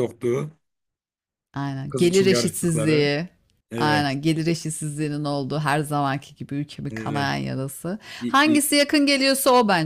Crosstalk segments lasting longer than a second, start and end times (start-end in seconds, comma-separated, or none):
1.9-3.1